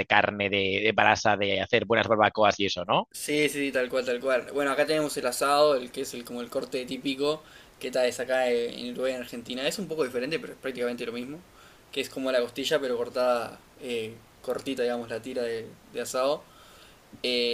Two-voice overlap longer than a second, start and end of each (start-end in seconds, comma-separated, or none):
none